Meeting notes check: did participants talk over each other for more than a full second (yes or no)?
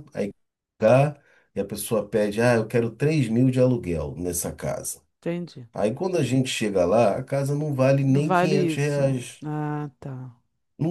yes